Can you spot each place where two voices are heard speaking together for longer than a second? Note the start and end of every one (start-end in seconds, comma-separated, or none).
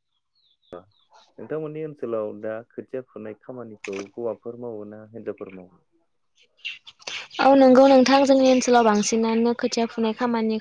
none